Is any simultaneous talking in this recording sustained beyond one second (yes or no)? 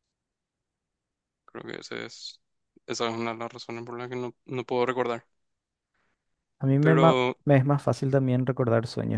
no